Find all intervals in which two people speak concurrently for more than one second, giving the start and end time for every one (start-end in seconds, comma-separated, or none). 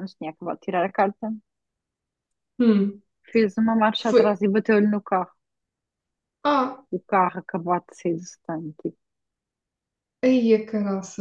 none